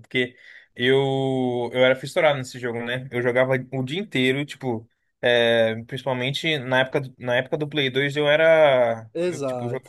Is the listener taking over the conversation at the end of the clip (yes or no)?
no